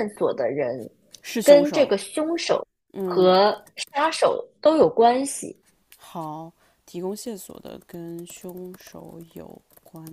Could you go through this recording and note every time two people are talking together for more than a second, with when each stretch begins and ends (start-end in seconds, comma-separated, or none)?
none